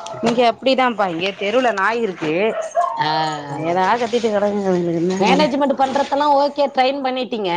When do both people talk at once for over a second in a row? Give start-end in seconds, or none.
none